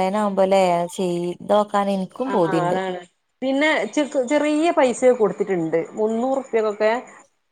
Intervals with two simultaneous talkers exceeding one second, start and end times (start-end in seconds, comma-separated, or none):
none